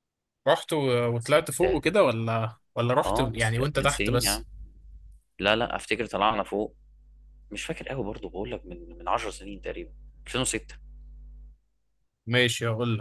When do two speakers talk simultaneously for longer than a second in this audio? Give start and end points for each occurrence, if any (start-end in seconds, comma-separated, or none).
3.0-4.5